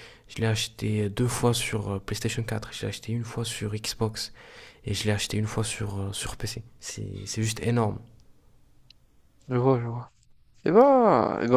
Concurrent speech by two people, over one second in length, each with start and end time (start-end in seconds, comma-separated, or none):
none